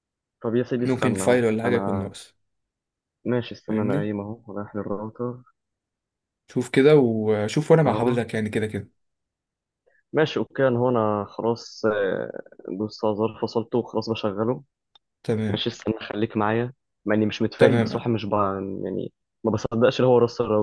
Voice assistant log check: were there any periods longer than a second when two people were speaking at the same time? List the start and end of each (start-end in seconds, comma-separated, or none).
0.8-2.1